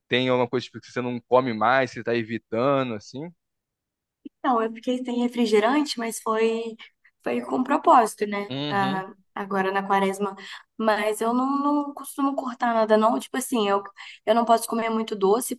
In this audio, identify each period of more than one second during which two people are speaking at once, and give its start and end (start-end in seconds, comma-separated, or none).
none